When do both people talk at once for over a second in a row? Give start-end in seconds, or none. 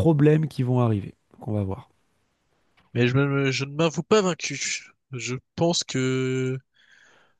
none